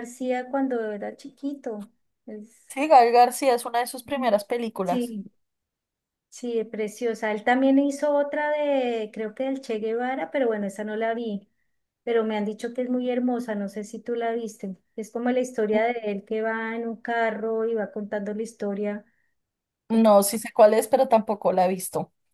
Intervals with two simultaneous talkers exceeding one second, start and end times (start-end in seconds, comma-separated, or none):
none